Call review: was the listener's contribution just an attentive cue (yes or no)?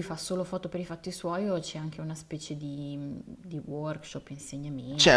no